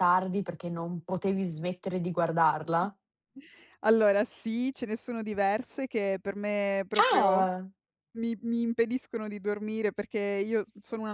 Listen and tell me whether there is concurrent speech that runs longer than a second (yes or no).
no